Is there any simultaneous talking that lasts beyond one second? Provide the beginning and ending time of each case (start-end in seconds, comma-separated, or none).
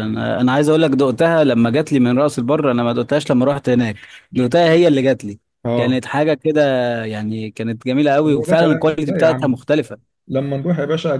8.3-9.6